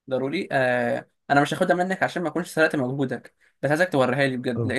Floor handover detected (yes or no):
yes